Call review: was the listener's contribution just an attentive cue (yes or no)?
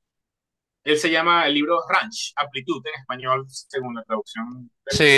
no